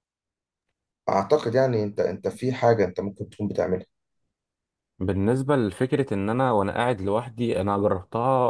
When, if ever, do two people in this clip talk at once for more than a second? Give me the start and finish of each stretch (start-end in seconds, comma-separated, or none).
none